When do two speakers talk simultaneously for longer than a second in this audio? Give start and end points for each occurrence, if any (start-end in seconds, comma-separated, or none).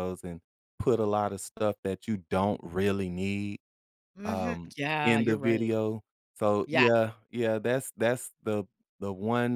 4.2-5.7